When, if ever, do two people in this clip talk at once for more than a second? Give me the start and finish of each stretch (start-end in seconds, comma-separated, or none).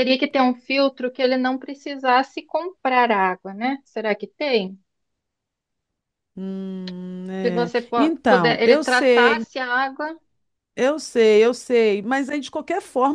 7.4-9.4